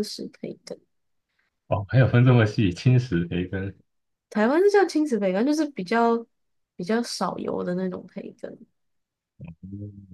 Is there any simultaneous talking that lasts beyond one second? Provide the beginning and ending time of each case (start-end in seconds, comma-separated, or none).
none